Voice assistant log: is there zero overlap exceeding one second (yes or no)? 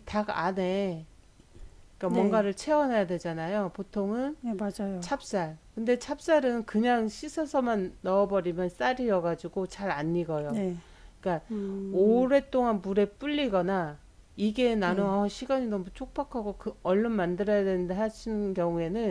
yes